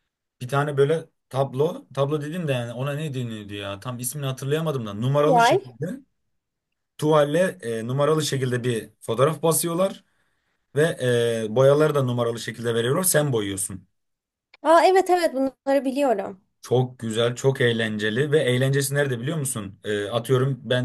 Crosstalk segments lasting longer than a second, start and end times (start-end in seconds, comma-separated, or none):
none